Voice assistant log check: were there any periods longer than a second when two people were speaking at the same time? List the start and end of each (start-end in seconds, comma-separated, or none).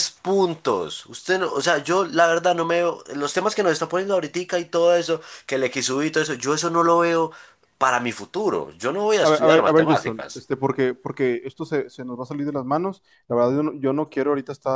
9.2-10.4